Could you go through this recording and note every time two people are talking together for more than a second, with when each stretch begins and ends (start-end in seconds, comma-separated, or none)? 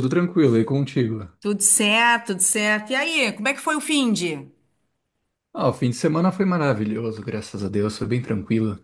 none